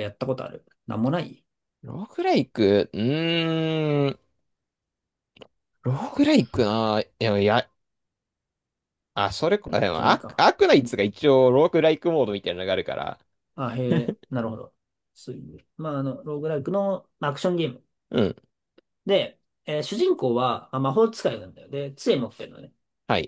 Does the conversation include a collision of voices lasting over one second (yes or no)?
no